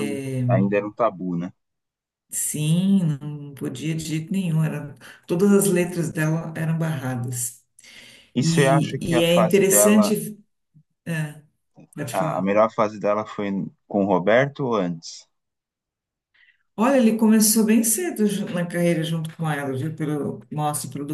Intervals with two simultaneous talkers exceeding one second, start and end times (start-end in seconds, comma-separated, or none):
8.4-10.1